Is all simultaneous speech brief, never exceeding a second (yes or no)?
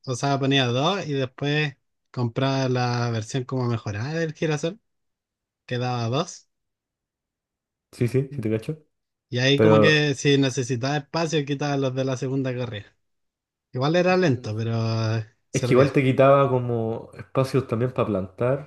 yes